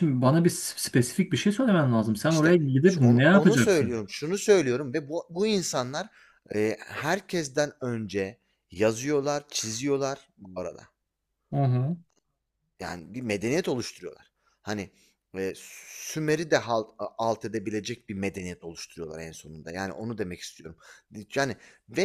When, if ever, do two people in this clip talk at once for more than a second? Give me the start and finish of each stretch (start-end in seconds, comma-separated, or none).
2.3-4.0